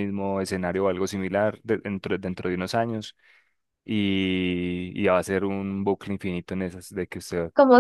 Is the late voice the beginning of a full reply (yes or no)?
yes